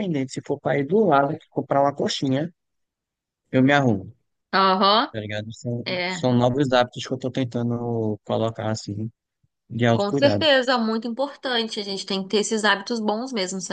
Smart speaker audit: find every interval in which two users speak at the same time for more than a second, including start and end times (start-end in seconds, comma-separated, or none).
none